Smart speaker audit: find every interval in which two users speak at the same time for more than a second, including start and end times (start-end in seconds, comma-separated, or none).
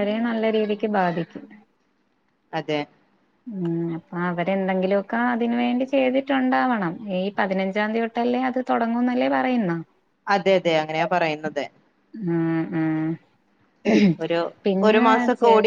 none